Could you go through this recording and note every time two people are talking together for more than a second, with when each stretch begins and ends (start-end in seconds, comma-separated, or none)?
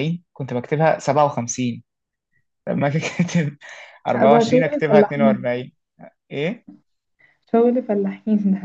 4.1-5.5